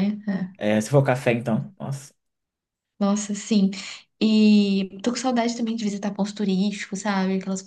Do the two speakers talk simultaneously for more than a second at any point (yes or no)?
no